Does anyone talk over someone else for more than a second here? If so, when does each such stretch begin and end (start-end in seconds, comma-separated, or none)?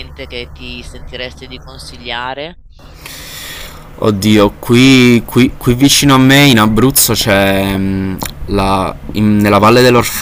none